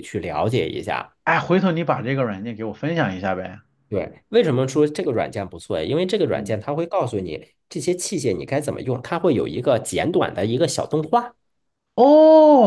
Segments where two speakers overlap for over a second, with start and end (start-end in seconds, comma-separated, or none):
none